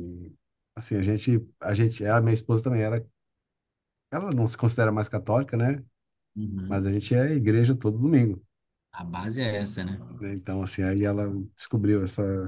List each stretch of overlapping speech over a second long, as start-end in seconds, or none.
none